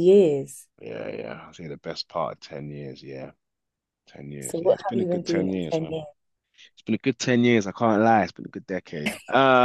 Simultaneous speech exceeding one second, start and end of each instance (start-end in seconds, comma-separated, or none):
4.4-6.0